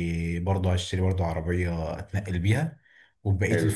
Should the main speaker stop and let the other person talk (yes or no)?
no